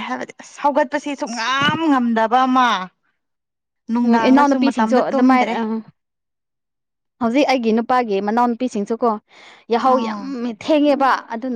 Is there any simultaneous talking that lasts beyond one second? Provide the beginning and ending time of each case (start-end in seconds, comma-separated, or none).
4.1-5.5